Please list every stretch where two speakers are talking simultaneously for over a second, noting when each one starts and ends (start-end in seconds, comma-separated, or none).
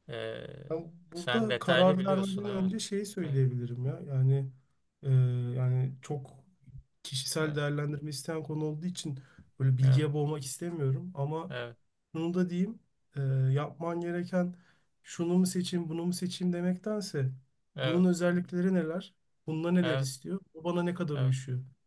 1.1-2.7